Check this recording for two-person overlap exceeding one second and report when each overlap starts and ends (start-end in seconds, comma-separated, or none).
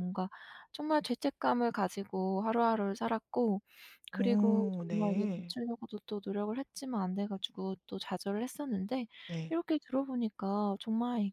4.1-5.5